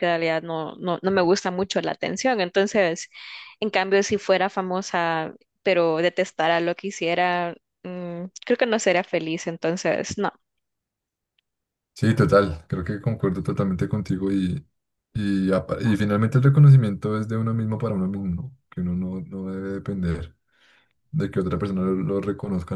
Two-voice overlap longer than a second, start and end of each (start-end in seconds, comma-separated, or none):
none